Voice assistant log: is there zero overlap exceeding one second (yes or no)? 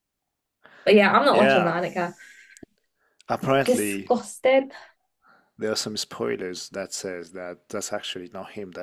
yes